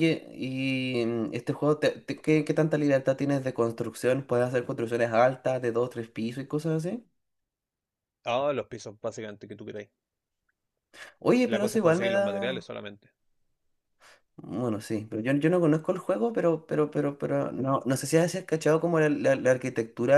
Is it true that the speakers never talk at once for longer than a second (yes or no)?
no